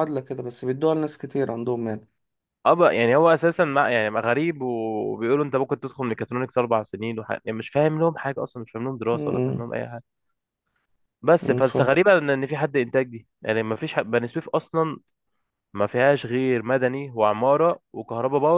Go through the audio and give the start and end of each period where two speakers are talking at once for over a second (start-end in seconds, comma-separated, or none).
none